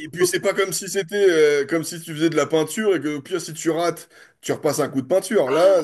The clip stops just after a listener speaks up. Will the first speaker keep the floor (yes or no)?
no